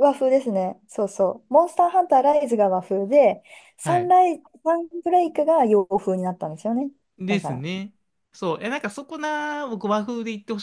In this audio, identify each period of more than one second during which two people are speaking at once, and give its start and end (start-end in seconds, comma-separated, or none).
none